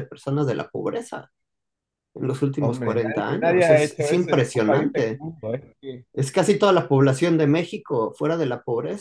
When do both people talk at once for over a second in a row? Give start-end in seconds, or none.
2.6-5.2